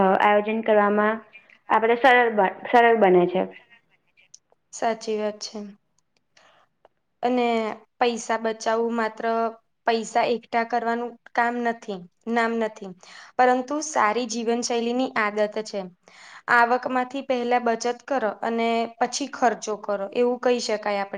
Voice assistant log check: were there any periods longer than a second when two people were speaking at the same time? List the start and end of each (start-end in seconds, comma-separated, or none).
none